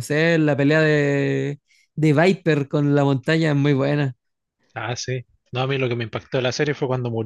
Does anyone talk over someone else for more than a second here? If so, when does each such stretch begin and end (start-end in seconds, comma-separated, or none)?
none